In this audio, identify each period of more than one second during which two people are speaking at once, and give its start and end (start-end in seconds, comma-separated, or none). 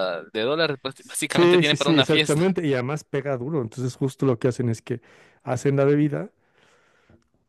1.3-2.5